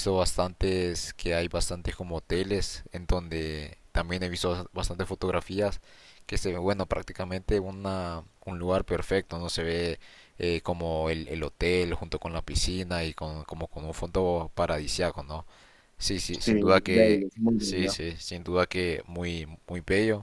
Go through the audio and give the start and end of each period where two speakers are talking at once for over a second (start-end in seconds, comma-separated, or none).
16.4-17.9